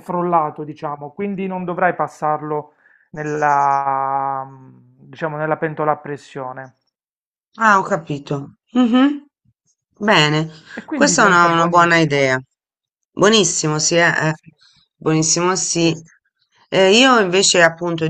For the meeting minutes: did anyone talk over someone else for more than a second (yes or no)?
yes